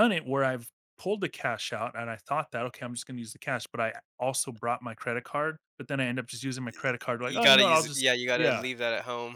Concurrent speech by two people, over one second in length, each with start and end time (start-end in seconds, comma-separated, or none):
7.2-8.6